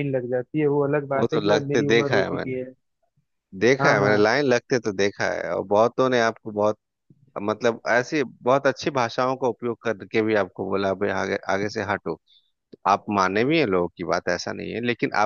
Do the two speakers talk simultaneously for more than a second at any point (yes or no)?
yes